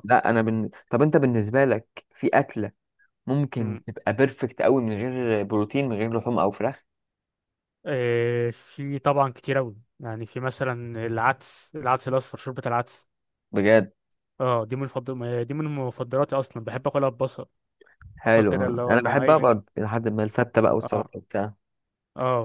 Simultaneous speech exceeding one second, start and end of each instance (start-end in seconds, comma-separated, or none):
18.2-19.5